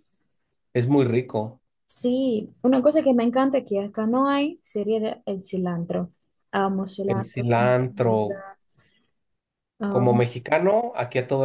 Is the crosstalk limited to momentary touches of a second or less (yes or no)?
no